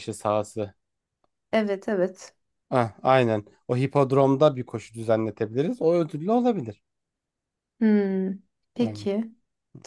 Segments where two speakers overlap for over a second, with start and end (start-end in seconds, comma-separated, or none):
none